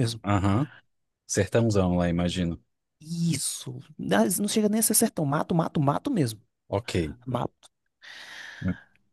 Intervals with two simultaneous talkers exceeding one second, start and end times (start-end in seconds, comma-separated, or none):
none